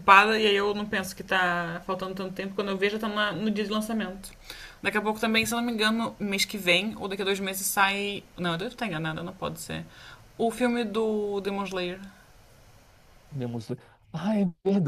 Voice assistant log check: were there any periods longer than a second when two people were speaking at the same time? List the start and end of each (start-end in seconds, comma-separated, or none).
none